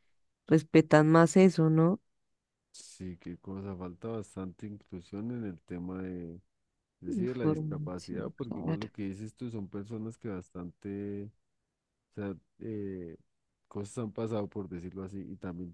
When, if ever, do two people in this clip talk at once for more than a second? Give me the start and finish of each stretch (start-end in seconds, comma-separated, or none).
7.1-8.9